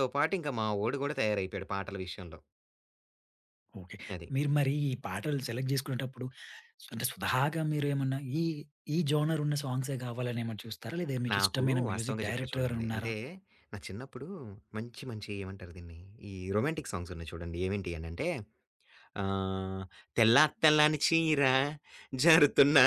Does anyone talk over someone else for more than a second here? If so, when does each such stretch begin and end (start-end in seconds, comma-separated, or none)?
11.3-13.1